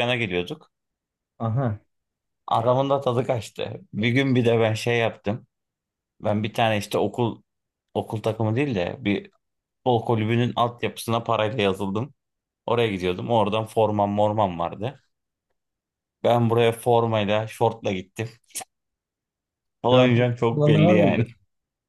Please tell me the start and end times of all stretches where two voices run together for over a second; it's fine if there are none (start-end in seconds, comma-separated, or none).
19.9-21.3